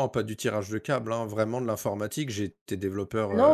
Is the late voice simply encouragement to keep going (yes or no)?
no